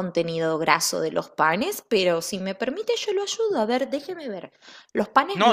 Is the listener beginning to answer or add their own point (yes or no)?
yes